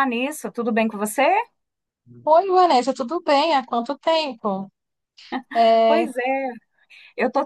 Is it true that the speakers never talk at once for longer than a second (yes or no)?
yes